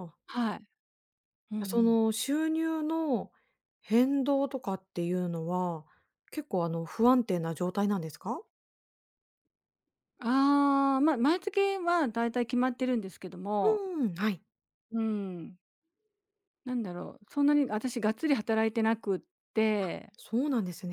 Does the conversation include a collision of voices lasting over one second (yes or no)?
no